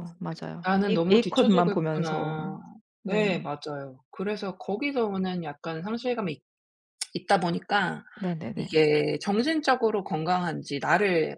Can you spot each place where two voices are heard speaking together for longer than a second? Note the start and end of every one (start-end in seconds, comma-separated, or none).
0.6-2.4